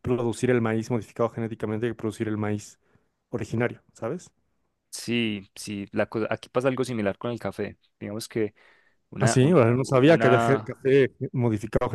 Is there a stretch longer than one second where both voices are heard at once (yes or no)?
yes